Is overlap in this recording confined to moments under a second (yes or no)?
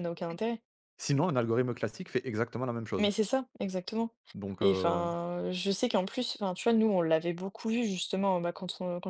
yes